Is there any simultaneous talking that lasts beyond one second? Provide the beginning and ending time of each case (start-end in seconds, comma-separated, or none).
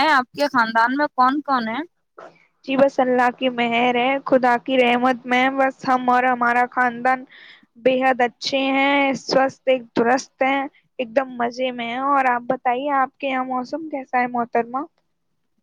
none